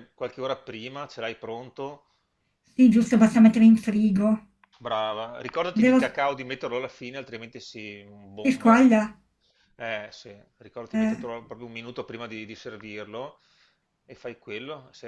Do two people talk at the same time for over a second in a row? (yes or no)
no